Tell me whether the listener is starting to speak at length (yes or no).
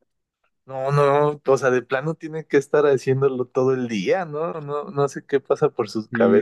yes